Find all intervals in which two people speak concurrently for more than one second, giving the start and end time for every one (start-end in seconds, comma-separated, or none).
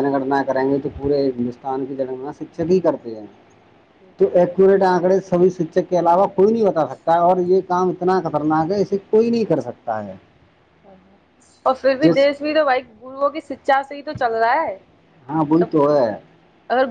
none